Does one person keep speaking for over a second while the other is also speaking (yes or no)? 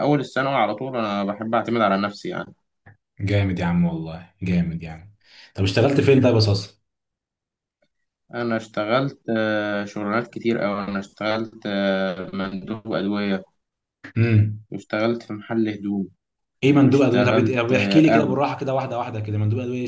yes